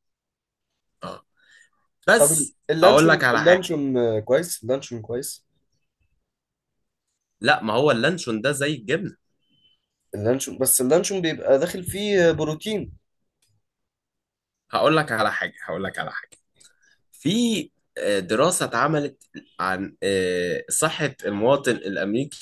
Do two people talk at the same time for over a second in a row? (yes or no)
yes